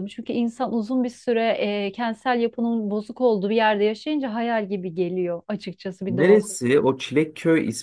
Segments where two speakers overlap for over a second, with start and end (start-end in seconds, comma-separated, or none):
none